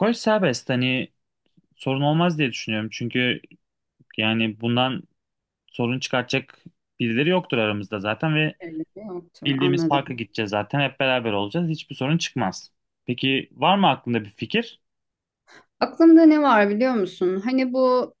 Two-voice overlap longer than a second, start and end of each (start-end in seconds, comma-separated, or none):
none